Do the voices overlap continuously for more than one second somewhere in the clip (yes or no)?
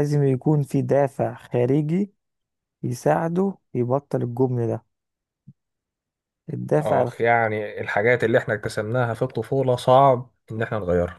no